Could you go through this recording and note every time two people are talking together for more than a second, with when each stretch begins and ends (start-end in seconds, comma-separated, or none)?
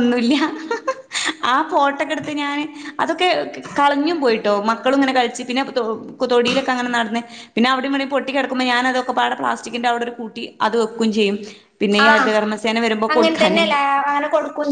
none